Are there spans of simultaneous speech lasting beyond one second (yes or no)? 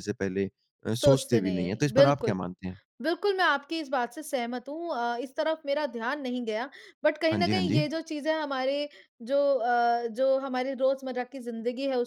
yes